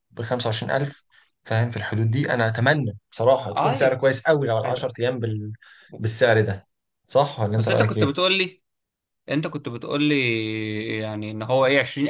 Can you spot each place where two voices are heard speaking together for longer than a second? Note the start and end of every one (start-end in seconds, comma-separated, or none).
none